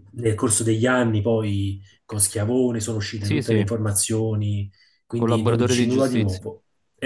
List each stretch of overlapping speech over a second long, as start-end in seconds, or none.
5.2-6.5